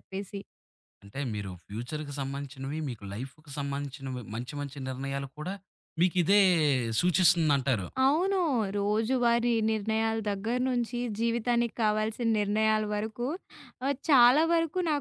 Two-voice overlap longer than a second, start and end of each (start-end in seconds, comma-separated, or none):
none